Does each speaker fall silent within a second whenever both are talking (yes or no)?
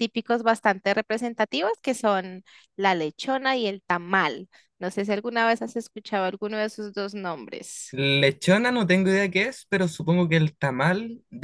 yes